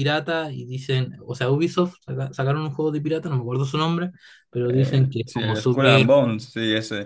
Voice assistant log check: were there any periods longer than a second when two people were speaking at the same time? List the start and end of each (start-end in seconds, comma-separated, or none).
4.7-6.1